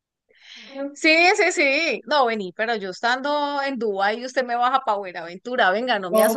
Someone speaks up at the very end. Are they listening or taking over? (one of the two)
taking over